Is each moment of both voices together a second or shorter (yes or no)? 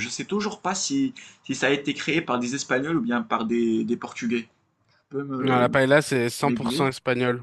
yes